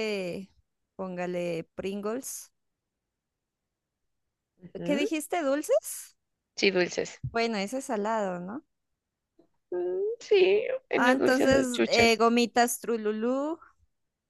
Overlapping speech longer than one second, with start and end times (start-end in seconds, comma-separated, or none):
10.9-12.2